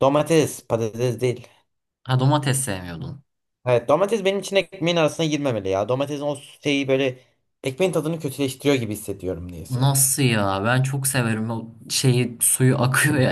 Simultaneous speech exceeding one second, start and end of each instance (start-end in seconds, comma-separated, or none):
none